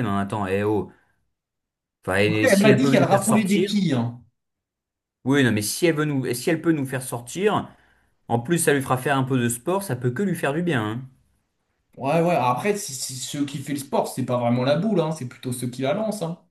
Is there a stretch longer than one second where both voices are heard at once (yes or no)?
yes